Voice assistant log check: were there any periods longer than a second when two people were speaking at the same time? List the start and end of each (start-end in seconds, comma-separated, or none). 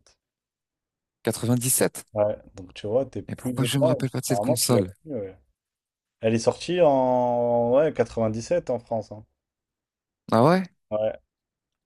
3.3-4.9